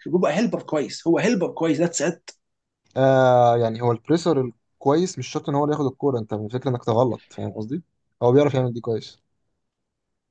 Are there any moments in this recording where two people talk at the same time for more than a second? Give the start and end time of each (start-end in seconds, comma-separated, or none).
none